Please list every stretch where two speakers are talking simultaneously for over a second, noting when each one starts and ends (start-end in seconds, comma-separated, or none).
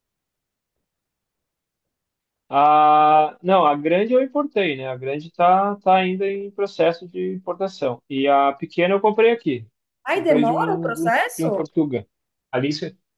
10.1-11.6